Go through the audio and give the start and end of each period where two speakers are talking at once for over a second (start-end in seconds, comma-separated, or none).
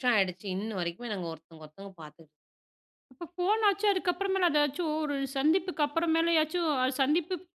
none